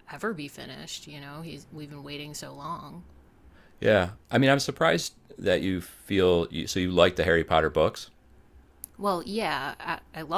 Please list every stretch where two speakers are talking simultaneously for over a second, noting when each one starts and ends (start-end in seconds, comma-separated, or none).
none